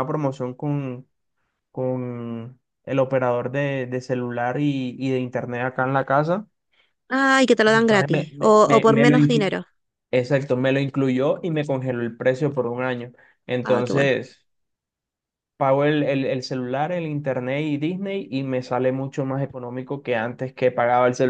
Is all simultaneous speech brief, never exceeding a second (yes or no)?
no